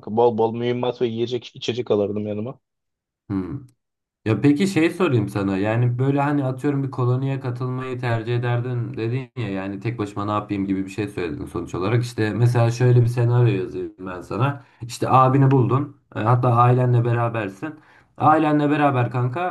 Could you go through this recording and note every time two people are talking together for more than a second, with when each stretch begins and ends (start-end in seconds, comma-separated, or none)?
none